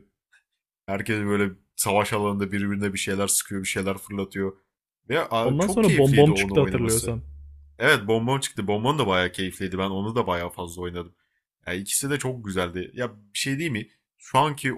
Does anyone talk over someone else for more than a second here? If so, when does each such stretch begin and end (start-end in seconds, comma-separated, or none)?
5.4-7.1